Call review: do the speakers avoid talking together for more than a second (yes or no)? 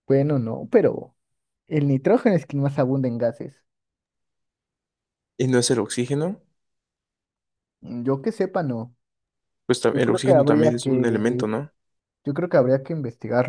no